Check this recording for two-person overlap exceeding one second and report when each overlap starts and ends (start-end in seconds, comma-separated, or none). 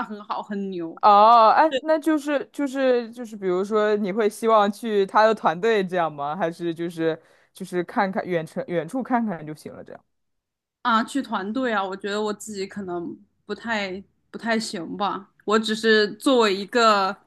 none